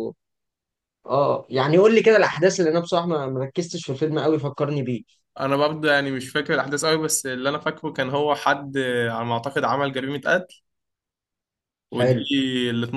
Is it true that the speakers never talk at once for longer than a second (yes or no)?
yes